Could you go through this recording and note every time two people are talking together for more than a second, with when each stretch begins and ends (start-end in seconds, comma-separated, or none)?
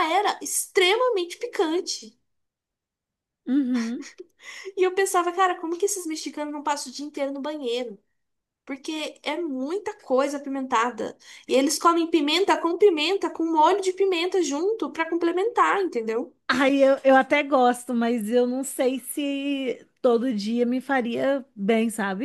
none